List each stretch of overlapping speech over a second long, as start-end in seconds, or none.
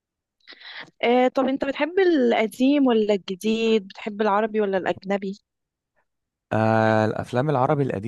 none